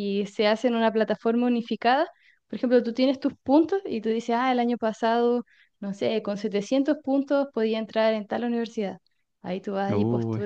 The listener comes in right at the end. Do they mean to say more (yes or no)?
no